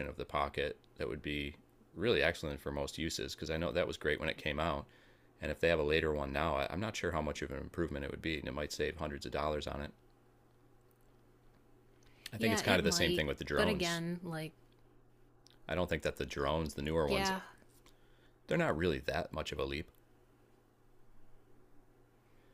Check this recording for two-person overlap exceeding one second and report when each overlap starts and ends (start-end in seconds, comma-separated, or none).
12.4-14.0